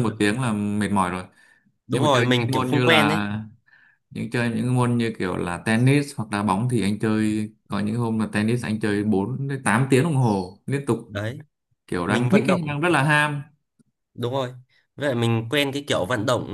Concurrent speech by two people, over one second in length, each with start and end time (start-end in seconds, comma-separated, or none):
1.9-3.2